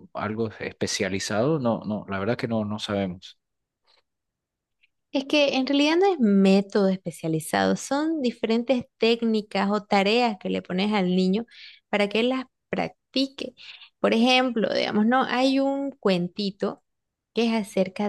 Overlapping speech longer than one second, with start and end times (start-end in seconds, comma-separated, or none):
none